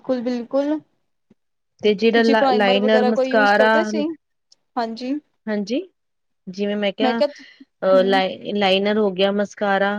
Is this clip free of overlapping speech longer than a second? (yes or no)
yes